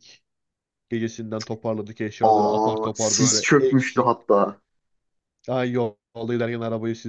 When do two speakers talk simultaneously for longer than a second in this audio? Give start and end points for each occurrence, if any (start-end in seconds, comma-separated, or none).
2.2-4.1